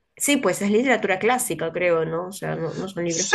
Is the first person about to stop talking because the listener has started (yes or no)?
yes